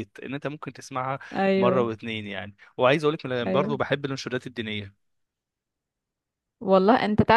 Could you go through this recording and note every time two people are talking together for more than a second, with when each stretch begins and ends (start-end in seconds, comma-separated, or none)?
none